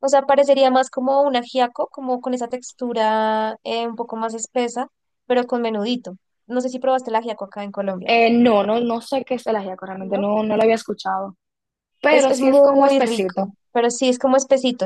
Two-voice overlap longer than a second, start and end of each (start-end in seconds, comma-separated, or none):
12.1-13.5